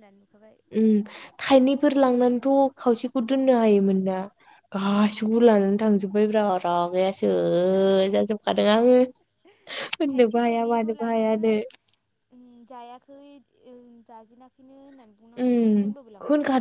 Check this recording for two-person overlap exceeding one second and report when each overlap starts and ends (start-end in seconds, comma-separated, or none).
10.1-11.5